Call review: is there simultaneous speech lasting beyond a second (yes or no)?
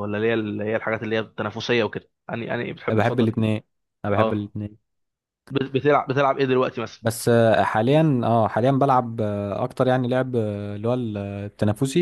no